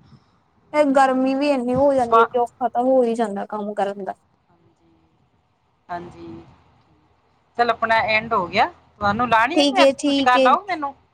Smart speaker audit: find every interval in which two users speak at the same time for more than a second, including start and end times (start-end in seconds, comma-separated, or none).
none